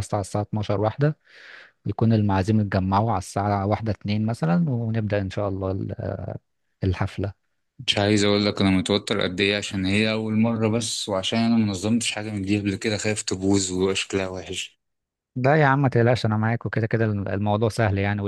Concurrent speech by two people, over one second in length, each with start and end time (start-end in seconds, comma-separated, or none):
none